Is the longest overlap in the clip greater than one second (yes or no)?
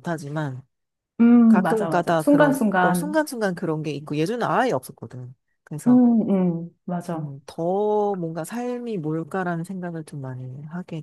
yes